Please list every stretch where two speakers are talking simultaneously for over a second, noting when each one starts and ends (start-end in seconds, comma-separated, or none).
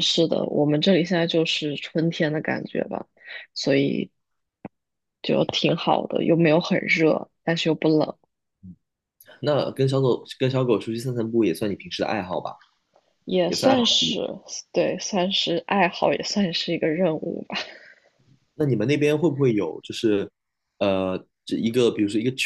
none